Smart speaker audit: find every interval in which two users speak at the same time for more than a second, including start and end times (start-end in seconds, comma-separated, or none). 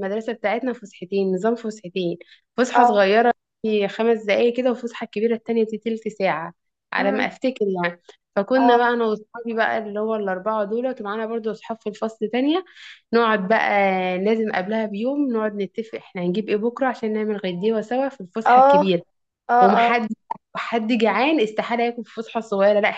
none